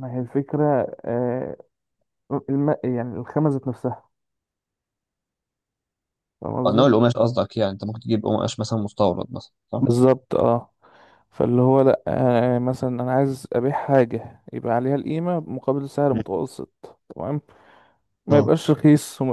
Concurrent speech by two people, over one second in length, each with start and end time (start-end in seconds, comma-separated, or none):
none